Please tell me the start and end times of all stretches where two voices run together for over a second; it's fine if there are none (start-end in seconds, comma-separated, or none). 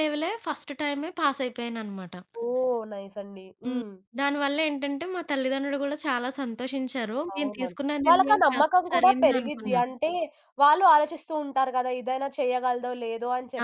7.3-9.9